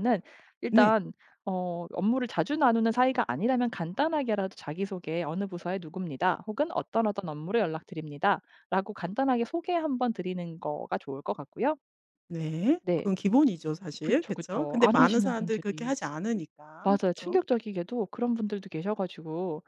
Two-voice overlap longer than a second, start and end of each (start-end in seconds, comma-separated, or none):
14.0-16.1